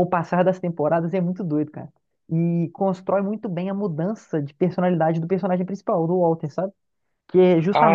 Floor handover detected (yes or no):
no